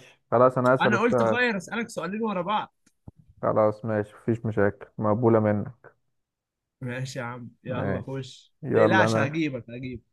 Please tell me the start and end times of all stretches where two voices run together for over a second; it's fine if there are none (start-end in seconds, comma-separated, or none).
7.7-9.4